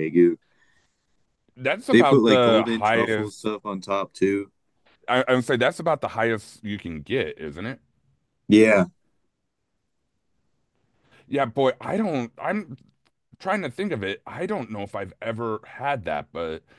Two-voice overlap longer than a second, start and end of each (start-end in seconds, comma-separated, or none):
1.9-3.5